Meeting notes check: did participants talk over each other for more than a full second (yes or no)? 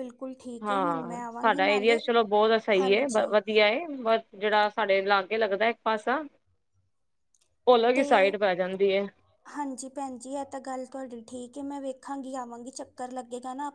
yes